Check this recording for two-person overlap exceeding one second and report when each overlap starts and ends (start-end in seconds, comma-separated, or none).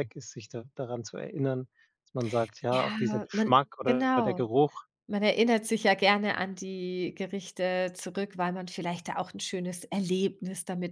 2.7-4.5